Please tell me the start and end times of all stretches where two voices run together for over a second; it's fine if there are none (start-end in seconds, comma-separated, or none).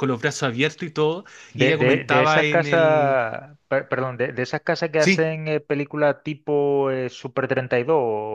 1.5-3.2